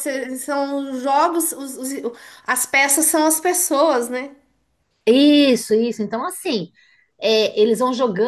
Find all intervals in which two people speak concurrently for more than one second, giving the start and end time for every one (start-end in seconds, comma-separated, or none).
none